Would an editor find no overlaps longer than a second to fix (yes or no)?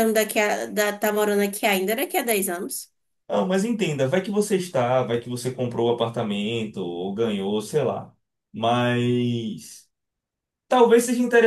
yes